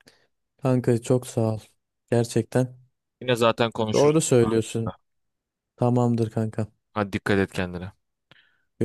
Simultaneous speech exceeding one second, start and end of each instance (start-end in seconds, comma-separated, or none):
none